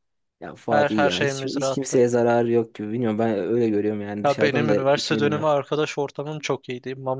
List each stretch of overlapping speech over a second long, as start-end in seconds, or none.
0.7-2.0, 4.2-5.5